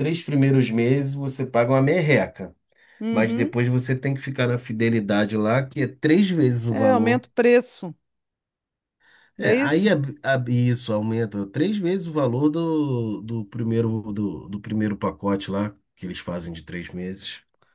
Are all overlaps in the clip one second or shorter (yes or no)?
yes